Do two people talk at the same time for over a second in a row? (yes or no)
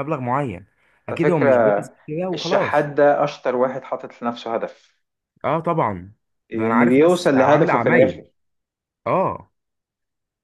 yes